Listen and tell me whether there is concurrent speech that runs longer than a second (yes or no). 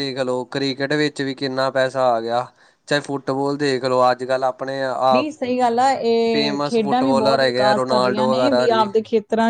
yes